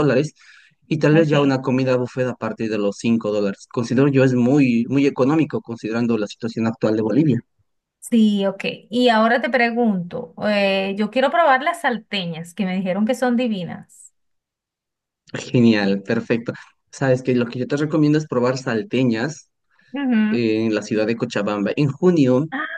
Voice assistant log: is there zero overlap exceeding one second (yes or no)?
yes